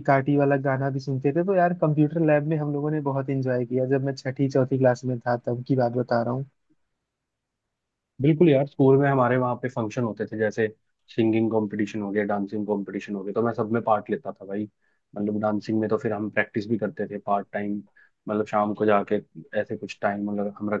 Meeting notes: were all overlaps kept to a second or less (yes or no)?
yes